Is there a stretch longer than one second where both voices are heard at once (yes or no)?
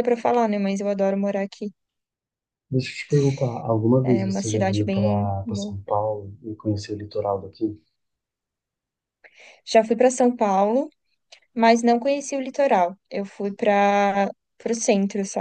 yes